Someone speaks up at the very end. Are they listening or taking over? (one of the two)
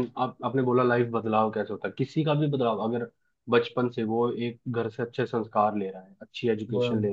listening